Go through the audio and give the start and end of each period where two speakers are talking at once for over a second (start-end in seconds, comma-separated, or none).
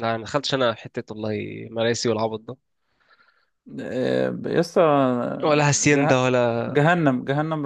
none